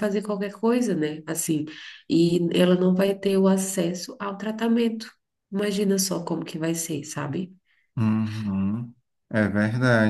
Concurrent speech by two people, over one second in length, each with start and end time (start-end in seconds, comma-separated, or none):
none